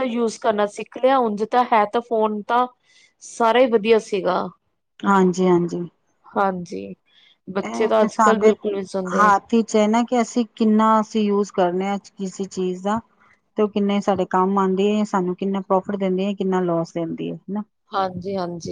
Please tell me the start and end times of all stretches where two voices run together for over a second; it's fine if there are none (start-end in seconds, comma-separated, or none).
none